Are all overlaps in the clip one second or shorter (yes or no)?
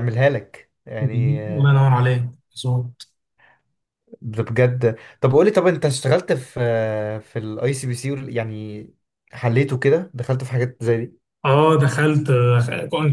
yes